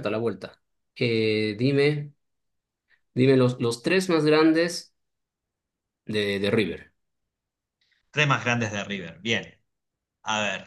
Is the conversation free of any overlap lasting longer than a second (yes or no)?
yes